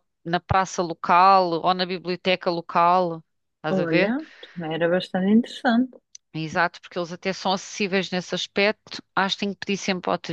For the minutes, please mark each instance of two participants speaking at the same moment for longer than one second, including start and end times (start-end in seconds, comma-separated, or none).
none